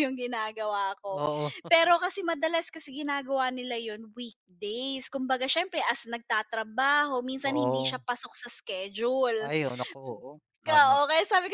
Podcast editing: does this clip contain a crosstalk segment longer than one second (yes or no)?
no